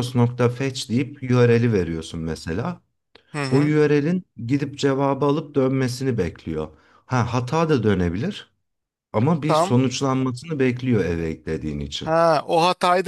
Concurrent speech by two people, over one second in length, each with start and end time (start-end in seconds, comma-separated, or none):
none